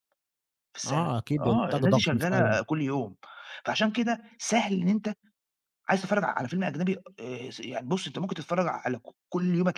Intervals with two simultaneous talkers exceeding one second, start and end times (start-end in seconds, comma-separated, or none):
0.9-2.6